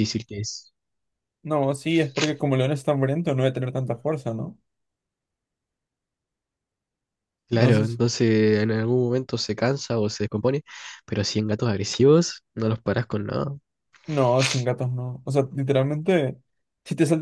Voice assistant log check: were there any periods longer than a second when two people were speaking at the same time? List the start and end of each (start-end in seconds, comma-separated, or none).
none